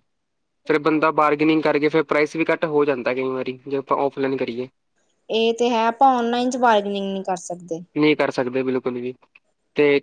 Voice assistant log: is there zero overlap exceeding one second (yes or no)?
yes